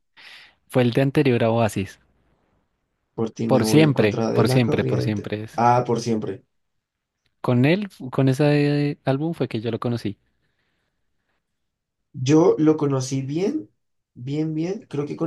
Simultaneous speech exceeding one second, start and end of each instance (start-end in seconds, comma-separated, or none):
3.5-5.6